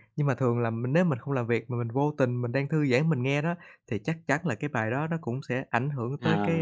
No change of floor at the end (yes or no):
no